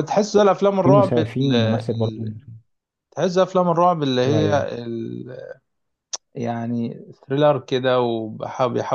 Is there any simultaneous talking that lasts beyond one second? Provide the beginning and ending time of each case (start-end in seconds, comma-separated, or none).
0.8-2.2